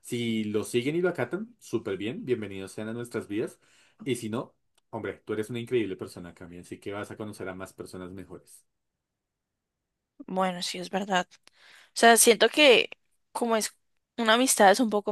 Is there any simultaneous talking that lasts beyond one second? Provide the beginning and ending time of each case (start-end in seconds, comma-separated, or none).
none